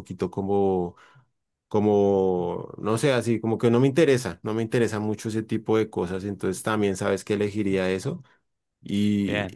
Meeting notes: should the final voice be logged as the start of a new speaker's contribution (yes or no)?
no